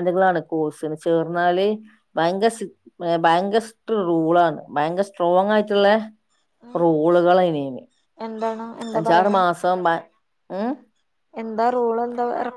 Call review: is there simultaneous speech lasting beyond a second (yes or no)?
no